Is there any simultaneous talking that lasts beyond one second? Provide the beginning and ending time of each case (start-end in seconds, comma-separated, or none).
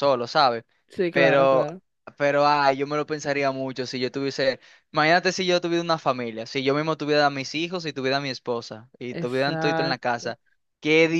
9.1-10.3